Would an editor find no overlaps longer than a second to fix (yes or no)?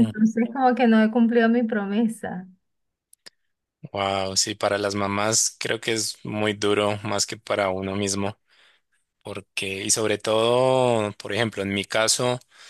yes